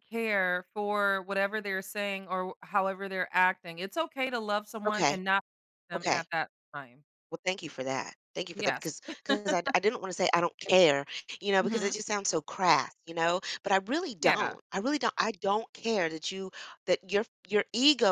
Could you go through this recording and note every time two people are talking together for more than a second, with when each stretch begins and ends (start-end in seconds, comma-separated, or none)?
none